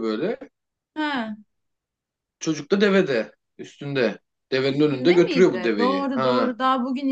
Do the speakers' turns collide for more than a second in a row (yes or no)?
yes